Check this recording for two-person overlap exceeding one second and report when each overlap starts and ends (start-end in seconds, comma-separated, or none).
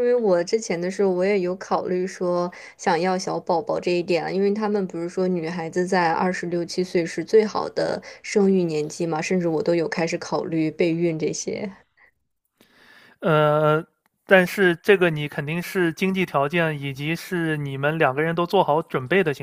none